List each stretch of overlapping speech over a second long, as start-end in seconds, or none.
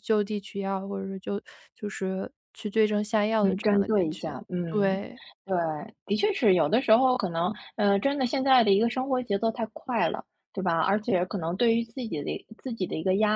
3.4-5.0